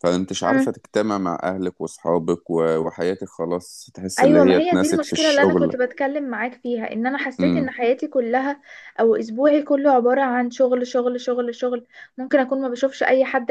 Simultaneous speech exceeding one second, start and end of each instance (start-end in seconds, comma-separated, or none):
4.2-5.8